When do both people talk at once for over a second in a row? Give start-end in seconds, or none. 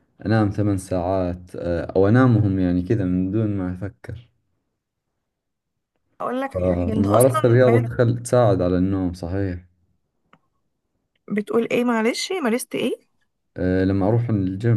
6.5-7.9